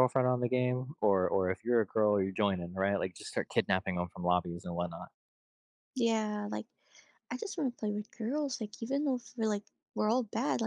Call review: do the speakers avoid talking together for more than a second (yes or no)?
yes